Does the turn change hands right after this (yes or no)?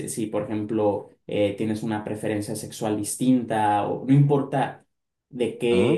no